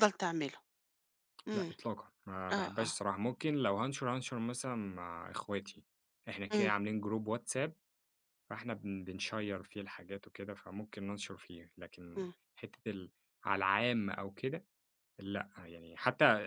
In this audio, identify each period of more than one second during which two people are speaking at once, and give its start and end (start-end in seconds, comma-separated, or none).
none